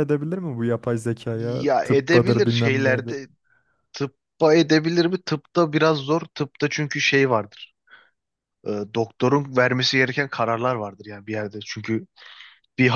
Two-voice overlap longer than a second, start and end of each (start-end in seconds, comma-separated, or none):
1.3-3.2